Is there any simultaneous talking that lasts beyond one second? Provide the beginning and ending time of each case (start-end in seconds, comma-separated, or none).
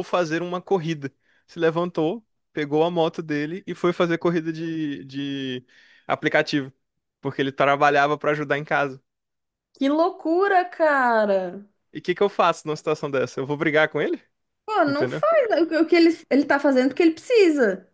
none